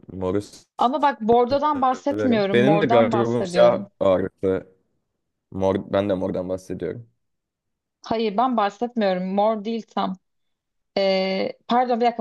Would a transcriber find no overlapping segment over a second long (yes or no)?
no